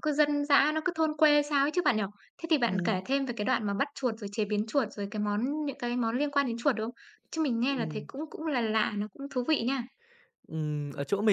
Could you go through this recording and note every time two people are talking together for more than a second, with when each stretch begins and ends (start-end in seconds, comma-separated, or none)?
none